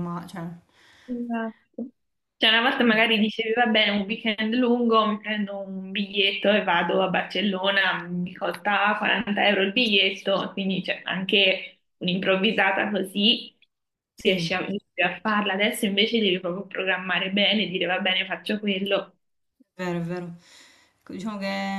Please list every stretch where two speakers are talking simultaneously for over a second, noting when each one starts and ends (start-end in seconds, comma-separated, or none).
none